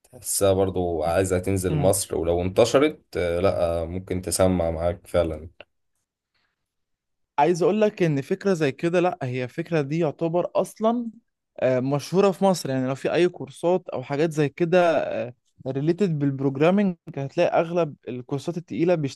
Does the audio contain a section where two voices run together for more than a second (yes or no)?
no